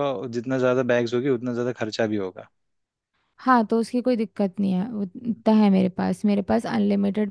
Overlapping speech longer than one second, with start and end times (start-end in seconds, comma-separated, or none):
none